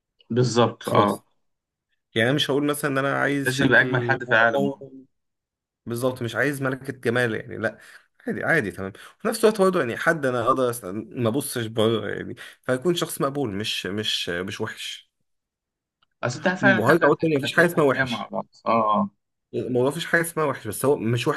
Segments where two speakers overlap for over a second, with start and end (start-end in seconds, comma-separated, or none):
3.4-4.8, 16.8-18.3